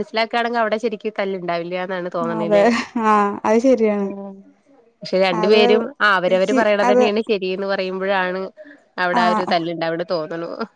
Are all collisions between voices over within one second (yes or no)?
yes